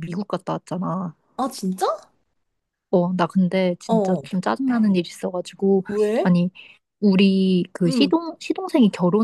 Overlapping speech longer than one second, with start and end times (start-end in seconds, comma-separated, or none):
none